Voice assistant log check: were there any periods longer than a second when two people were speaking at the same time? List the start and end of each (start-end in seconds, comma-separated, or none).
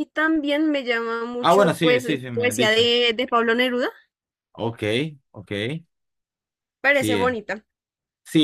1.4-2.9